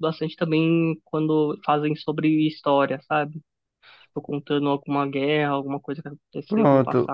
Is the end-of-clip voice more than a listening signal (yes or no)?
yes